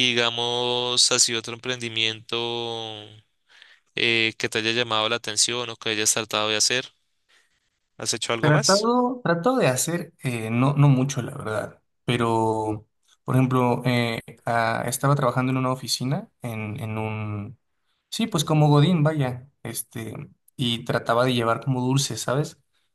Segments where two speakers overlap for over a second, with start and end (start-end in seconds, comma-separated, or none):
none